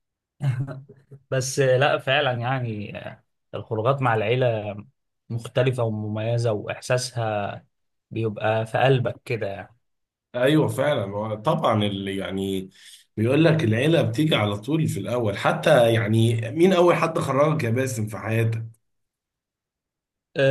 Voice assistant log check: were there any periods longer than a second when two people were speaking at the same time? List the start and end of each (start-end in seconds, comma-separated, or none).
none